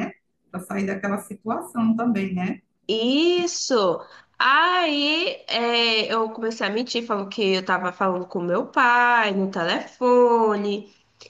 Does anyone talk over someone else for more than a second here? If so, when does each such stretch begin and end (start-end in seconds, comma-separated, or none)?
none